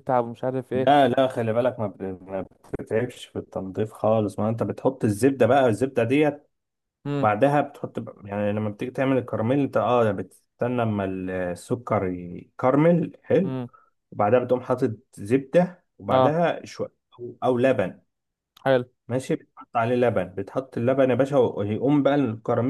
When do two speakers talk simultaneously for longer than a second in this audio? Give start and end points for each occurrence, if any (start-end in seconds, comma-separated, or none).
none